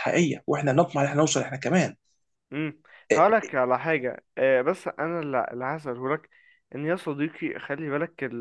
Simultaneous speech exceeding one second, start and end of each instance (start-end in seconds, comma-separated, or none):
none